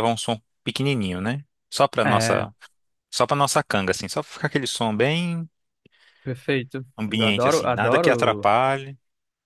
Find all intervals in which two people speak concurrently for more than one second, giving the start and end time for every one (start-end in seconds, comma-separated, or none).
7.0-8.5